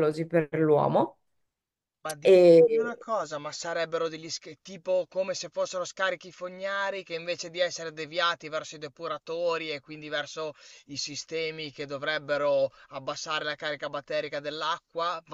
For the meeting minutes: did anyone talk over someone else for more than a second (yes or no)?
no